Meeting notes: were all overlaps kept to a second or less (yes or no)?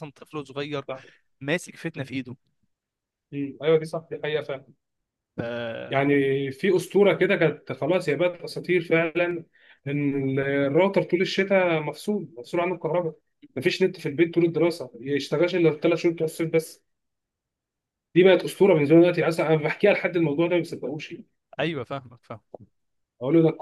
yes